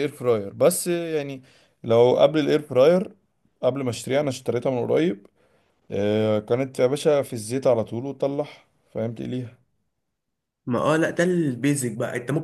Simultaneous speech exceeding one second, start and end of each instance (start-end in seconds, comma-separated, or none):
none